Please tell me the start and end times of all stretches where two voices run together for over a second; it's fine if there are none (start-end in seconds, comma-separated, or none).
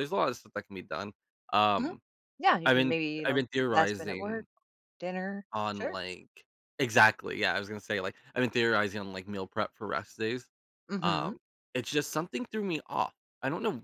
2.6-4.5